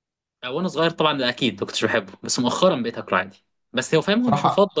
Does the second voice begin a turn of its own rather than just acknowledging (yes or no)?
no